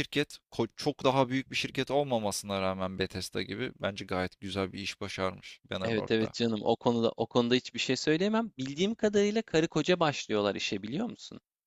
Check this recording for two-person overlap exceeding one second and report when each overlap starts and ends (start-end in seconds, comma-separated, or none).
none